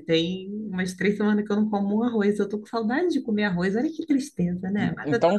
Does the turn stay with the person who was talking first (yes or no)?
no